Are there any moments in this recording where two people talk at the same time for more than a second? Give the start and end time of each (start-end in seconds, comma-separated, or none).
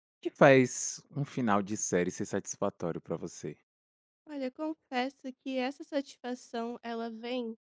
none